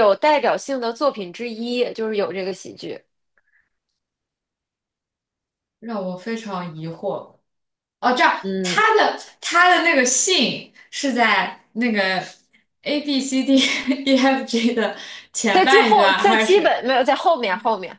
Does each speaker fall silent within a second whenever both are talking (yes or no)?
no